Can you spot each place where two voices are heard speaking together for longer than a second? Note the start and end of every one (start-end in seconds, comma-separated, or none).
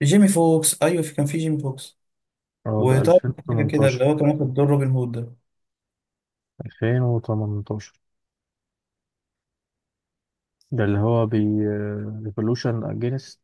2.8-4.0